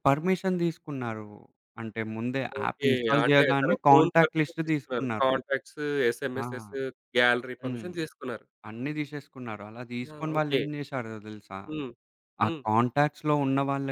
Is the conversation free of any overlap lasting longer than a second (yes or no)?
no